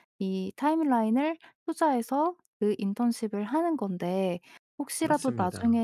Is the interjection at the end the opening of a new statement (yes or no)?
no